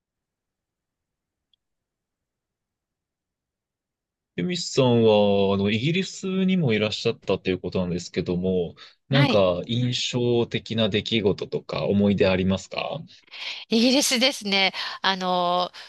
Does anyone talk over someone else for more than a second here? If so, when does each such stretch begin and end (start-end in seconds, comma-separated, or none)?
none